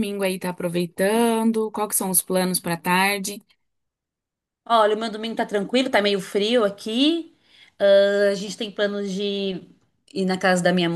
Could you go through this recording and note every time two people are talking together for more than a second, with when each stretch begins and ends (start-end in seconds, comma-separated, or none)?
none